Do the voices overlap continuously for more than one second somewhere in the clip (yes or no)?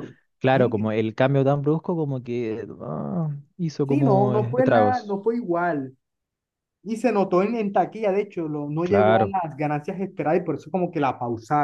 yes